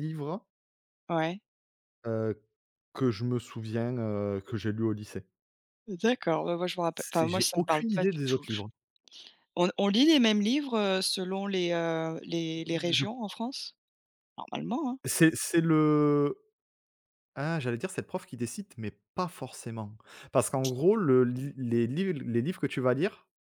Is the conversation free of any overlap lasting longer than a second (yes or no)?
no